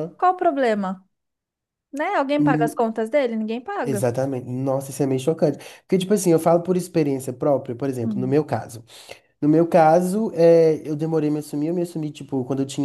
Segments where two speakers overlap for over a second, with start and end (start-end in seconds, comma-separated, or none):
none